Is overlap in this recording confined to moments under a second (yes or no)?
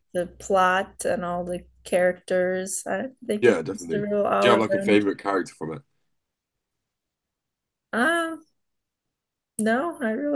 no